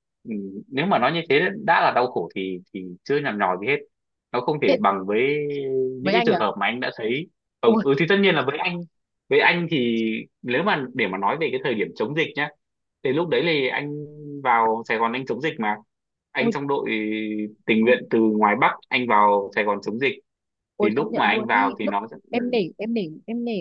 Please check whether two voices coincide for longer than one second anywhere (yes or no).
yes